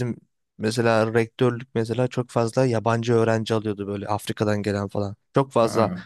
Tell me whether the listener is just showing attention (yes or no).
yes